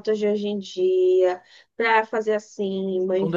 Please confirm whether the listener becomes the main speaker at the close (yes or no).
yes